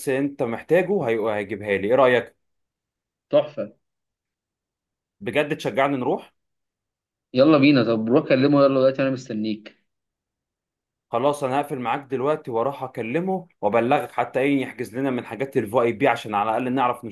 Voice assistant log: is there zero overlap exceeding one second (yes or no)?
yes